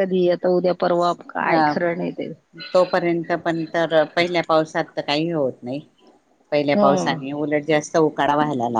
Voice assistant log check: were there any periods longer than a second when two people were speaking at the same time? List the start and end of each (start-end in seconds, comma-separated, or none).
none